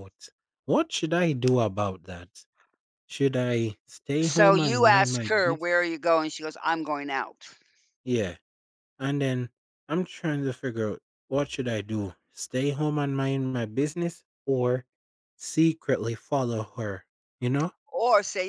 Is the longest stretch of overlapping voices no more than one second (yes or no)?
no